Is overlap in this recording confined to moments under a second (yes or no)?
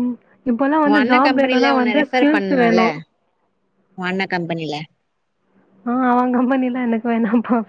no